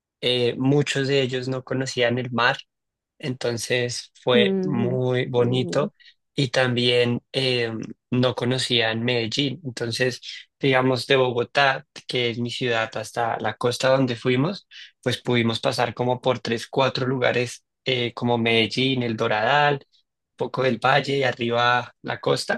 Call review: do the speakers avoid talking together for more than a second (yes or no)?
no